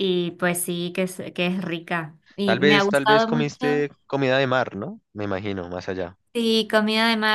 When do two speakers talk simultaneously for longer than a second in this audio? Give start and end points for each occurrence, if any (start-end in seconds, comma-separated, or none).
2.4-3.9